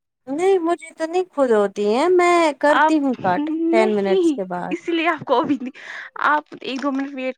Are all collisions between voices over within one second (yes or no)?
no